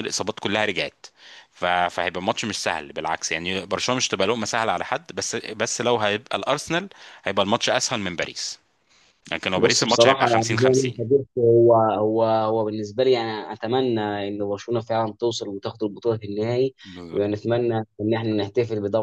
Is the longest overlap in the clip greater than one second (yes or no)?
yes